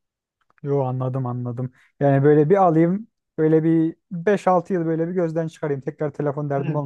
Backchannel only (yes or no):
no